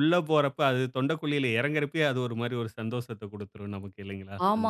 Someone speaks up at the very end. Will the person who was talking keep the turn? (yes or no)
no